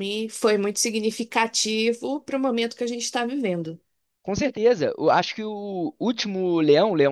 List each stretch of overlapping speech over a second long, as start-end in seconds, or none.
none